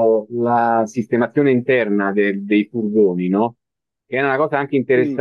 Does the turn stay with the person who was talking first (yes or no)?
yes